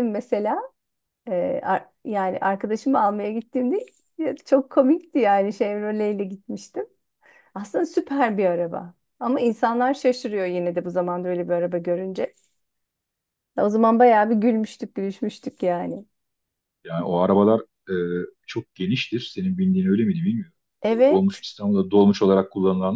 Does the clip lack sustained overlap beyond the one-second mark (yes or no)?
yes